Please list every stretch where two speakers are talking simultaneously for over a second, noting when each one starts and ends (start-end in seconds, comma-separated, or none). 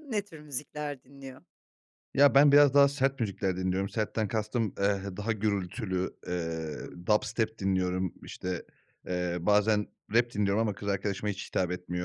none